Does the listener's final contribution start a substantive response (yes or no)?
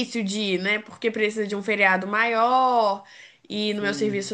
no